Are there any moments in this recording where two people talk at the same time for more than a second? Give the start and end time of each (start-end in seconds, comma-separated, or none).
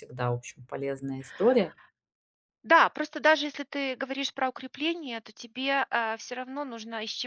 none